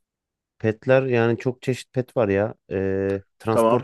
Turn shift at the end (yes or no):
yes